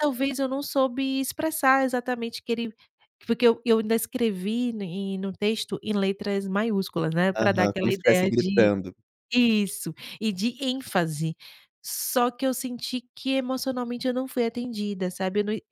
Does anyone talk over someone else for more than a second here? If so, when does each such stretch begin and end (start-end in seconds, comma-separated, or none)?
7.3-8.7